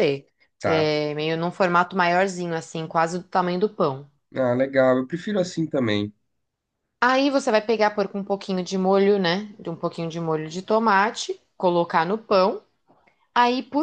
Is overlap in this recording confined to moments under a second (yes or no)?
yes